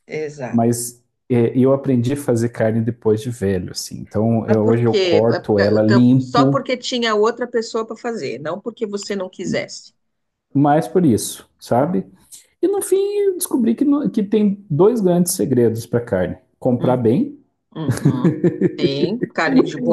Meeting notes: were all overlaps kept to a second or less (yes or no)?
no